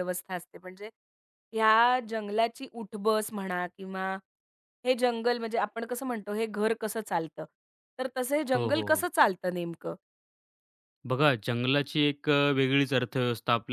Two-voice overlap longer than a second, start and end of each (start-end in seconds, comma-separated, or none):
none